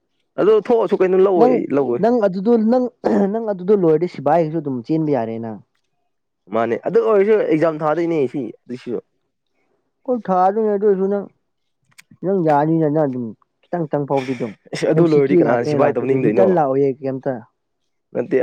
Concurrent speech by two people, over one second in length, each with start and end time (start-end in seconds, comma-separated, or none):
14.9-16.4